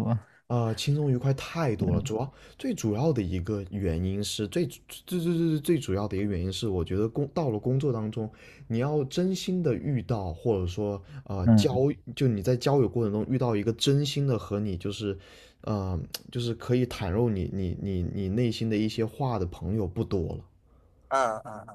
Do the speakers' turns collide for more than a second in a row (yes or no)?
no